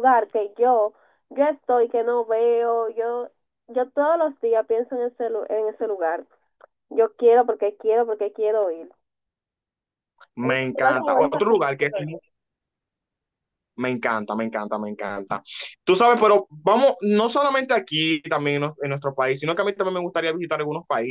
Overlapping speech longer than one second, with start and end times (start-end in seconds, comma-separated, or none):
10.4-12.2